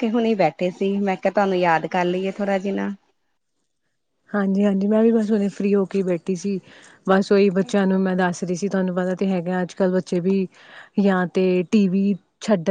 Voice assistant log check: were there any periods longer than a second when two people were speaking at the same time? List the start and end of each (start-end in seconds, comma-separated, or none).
none